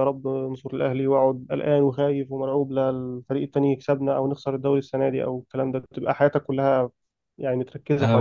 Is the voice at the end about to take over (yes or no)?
yes